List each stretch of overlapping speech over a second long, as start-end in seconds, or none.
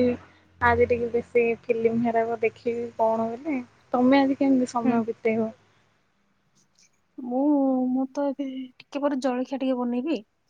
none